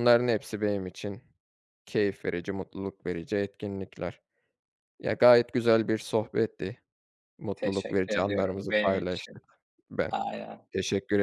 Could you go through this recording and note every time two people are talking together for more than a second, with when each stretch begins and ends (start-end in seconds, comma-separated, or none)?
7.6-9.4